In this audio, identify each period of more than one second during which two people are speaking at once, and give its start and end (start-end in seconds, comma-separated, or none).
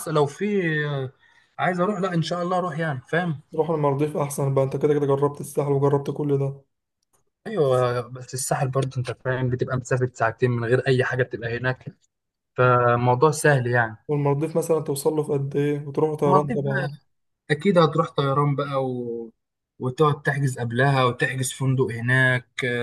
none